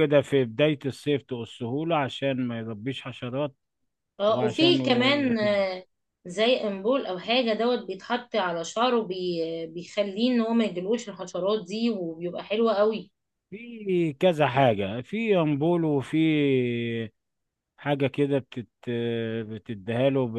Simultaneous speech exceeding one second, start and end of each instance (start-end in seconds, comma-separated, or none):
4.3-5.7